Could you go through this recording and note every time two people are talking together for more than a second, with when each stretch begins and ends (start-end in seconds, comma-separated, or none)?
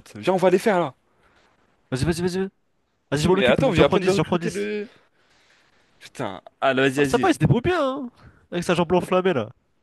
3.1-4.7